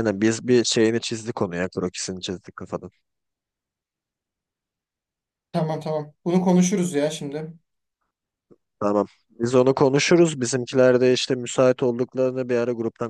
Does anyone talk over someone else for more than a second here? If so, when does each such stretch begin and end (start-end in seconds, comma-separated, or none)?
none